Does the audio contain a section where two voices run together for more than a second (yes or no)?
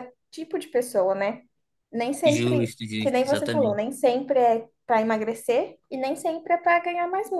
yes